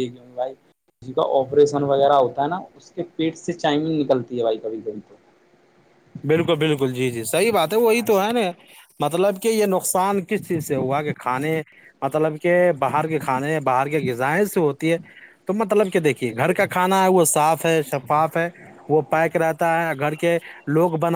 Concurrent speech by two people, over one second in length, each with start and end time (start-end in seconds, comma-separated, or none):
none